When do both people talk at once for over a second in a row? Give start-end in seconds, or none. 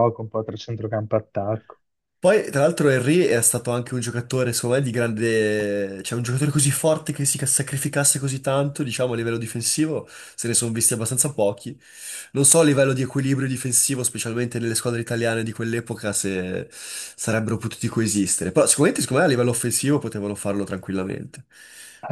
none